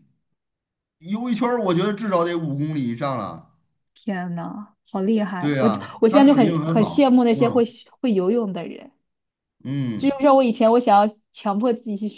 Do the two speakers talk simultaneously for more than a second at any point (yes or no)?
yes